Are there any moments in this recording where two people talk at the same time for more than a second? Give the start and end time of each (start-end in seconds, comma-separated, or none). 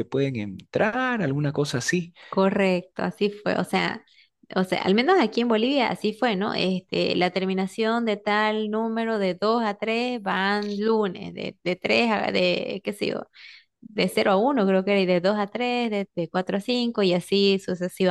none